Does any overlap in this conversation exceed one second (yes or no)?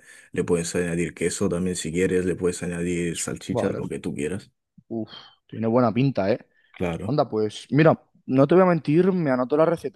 no